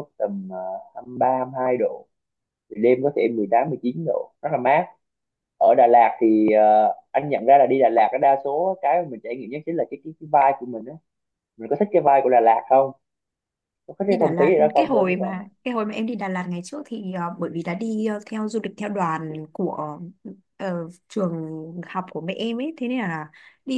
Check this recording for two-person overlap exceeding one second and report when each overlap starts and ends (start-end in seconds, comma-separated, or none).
14.1-15.5